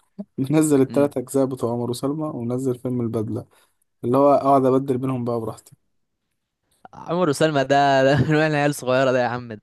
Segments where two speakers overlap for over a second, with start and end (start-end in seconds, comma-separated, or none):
none